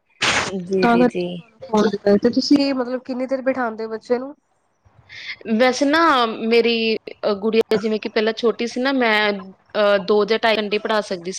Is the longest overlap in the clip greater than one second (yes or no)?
no